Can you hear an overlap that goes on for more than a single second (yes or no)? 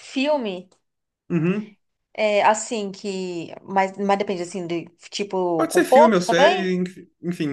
yes